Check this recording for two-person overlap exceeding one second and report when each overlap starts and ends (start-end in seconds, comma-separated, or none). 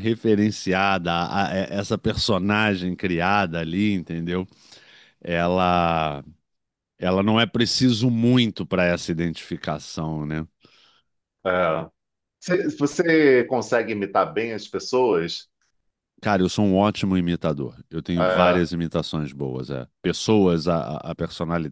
none